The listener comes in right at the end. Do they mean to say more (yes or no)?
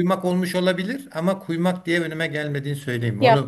yes